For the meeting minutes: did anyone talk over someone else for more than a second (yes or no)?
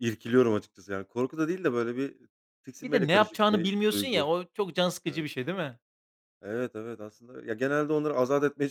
yes